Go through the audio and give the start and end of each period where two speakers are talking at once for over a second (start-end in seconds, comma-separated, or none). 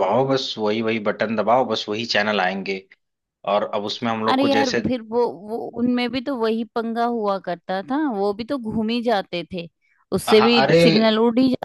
none